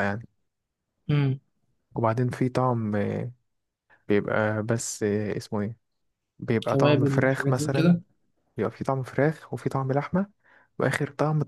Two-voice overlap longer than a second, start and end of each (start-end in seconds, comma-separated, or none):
6.7-8.0